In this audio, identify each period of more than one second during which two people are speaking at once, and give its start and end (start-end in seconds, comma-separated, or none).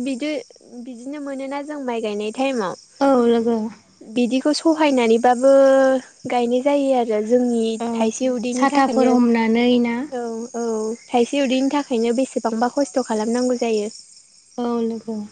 8.6-9.9